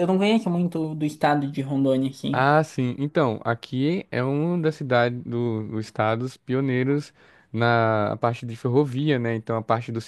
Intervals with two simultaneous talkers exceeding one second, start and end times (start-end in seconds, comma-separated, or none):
none